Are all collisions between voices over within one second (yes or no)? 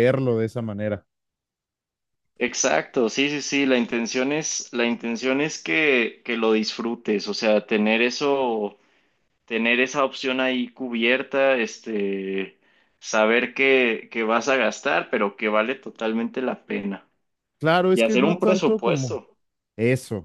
no